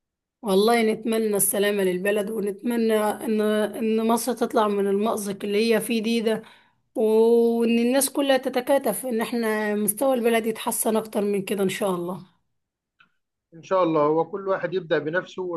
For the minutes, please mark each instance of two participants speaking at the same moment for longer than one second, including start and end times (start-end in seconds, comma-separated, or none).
none